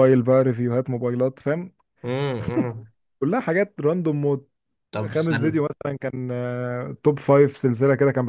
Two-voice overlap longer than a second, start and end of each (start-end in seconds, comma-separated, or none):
none